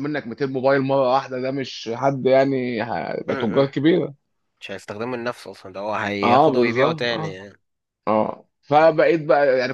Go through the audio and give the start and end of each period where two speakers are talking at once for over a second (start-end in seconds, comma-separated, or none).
6.2-7.5